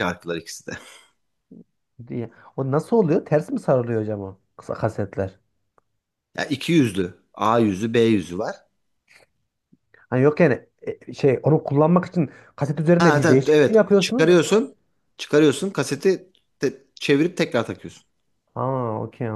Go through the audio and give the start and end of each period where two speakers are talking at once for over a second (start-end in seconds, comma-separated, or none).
13.0-14.4